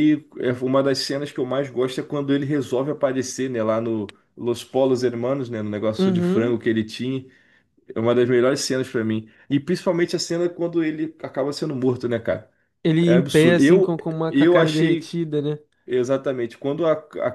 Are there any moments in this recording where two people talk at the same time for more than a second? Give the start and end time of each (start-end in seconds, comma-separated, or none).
13.1-15.1